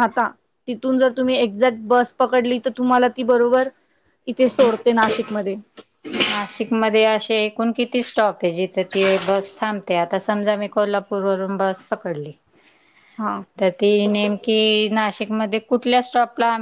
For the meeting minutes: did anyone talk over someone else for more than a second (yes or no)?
no